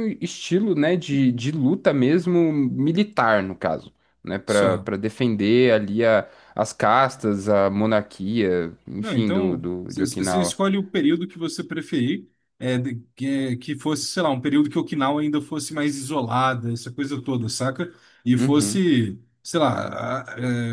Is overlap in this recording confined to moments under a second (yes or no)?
no